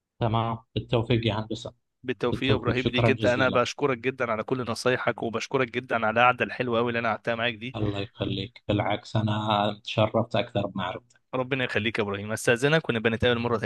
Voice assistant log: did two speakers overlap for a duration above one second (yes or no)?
yes